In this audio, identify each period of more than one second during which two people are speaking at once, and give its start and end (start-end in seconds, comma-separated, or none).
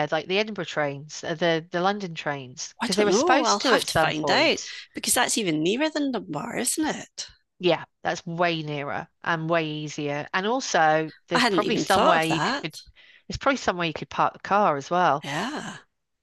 2.8-4.6, 11.3-12.7